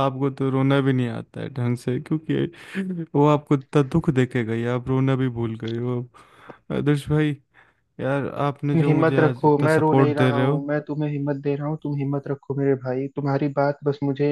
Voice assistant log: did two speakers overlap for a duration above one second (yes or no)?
yes